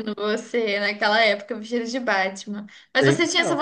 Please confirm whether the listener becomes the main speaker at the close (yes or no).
no